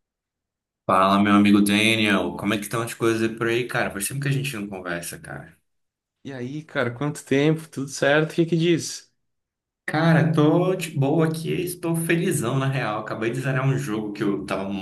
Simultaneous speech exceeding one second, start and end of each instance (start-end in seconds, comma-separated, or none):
none